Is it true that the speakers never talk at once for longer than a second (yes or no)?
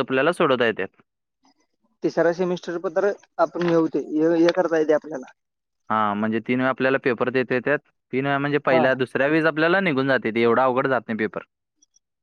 yes